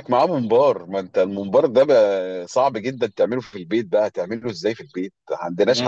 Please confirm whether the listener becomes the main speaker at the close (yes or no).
yes